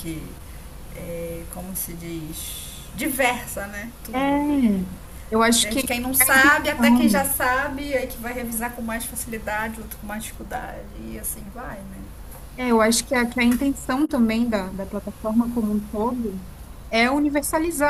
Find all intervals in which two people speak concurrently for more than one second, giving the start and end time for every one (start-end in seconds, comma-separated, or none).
5.6-7.3